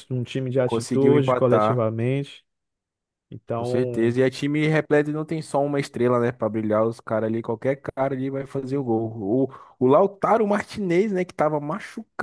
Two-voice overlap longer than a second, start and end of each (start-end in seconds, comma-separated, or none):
0.6-1.9